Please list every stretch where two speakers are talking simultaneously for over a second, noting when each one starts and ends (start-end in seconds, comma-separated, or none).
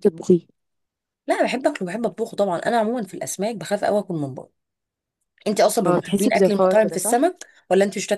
5.9-7.2